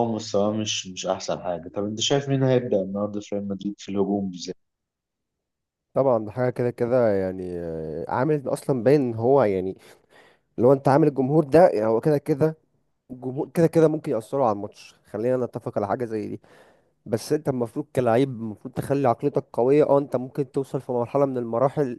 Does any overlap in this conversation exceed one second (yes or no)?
no